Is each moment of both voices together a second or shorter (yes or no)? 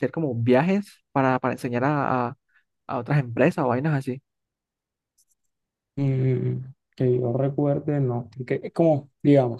yes